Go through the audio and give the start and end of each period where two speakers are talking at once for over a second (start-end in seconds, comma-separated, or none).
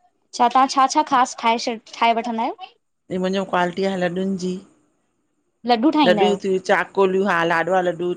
none